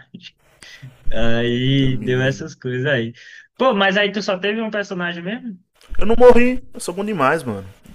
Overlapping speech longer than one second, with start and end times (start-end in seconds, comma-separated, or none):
none